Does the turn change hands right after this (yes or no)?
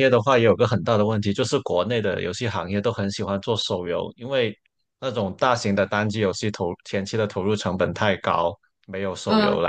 no